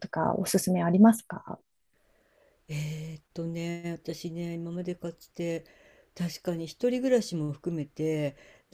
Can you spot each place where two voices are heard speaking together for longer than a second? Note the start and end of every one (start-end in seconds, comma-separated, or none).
none